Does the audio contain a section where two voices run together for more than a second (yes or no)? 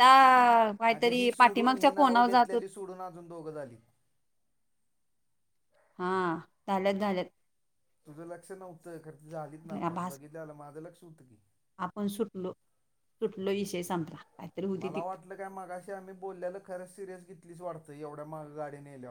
yes